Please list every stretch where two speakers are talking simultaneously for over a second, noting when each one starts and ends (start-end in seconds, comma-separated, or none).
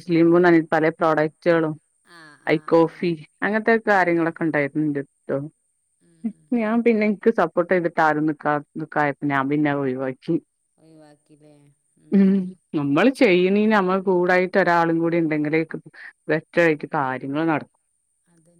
none